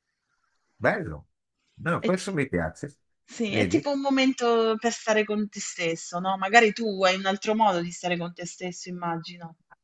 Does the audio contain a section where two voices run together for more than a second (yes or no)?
no